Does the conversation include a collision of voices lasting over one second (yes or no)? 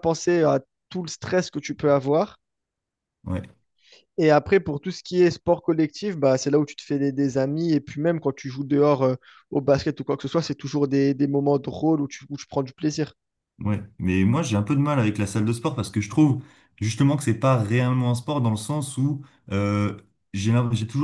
no